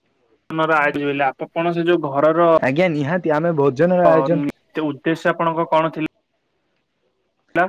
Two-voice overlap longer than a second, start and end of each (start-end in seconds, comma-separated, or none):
none